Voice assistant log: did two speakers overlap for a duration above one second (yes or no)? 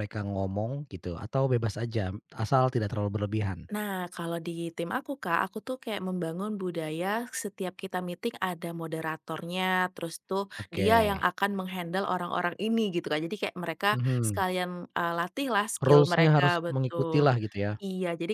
yes